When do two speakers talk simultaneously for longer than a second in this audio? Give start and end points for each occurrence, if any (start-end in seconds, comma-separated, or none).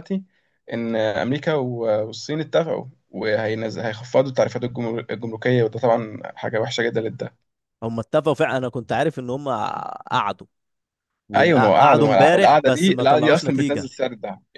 11.3-13.9